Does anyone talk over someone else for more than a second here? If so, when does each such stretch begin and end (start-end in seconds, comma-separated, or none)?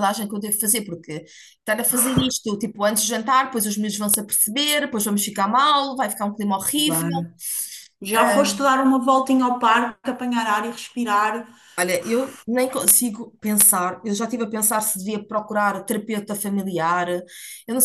none